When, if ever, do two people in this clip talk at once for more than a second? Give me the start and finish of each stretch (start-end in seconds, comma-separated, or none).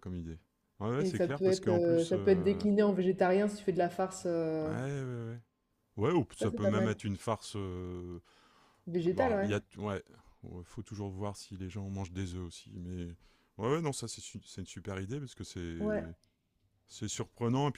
1.0-2.7